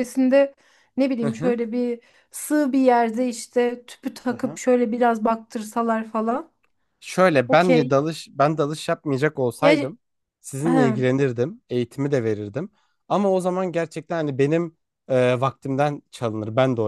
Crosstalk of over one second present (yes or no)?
no